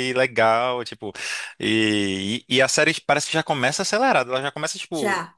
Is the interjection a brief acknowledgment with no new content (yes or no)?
yes